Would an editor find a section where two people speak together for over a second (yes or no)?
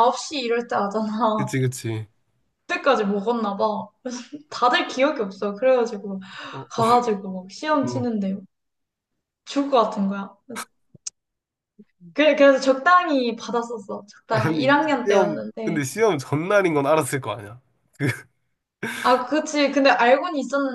yes